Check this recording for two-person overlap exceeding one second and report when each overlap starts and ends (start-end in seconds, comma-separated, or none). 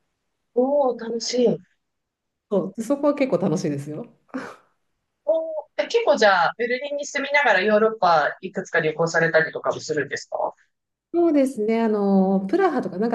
none